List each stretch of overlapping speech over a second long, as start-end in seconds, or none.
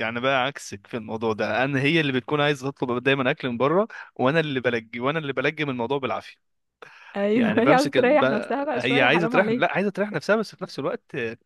7.3-9.7